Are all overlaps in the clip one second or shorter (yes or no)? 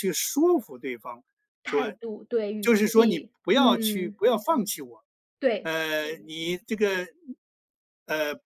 no